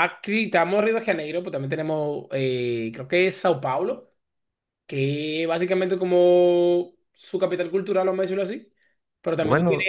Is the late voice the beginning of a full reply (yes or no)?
no